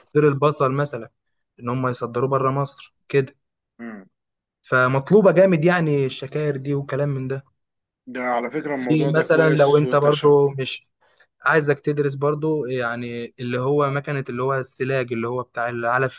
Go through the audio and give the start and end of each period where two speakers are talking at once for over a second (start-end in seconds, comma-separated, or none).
8.7-10.3